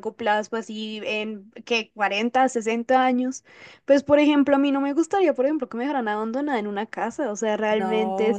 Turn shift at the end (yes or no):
no